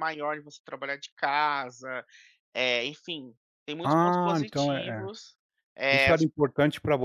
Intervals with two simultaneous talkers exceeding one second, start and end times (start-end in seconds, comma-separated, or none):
3.8-5.1